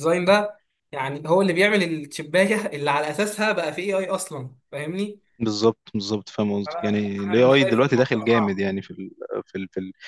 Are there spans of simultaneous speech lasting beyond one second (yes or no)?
yes